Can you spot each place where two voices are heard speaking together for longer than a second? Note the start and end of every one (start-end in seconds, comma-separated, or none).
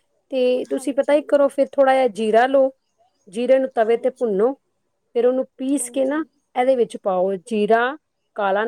none